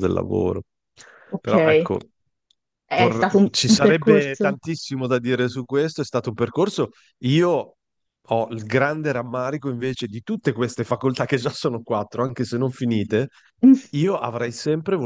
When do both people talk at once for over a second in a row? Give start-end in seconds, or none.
3.1-4.6